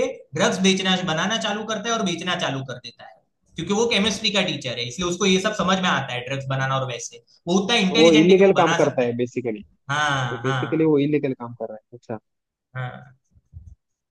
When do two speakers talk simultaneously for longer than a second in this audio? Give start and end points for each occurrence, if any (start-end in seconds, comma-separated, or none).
7.9-9.2